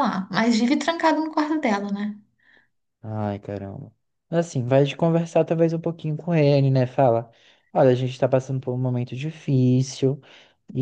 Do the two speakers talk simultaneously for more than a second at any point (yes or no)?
no